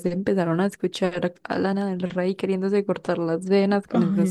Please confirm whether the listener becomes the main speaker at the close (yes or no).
yes